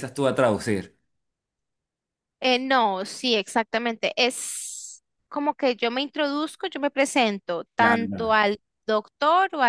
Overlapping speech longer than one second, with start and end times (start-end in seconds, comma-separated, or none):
none